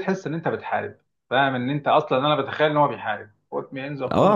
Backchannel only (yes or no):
no